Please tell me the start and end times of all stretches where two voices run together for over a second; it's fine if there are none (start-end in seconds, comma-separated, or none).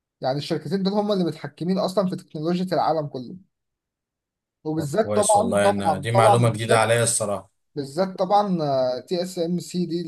4.8-6.9